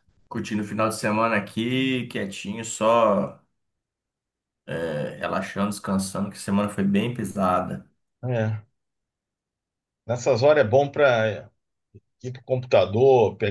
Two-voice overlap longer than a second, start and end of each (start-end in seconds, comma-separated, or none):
none